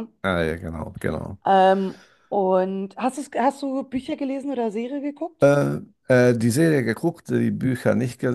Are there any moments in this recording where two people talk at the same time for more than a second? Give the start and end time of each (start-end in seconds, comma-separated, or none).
none